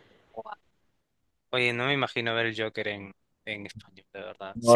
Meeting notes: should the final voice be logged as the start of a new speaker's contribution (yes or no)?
yes